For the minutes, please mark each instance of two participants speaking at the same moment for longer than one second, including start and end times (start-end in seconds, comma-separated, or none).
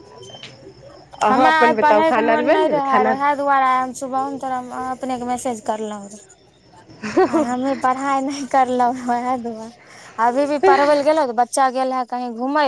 1.3-3.1